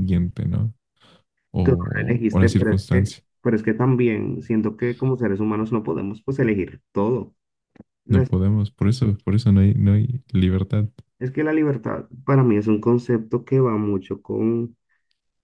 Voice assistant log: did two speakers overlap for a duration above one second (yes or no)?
yes